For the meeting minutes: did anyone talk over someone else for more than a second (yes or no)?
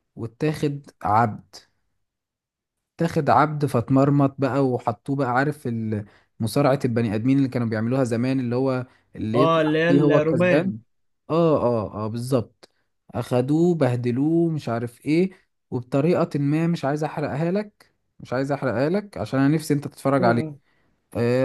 yes